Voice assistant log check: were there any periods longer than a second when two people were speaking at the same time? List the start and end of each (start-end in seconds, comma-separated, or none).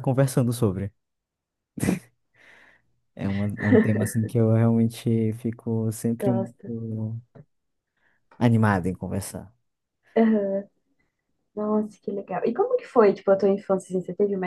none